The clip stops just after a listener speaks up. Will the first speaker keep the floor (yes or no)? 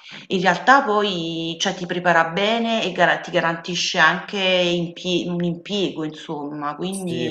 no